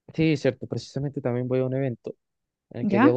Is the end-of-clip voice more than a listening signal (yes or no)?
no